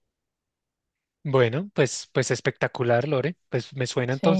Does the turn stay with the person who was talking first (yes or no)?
yes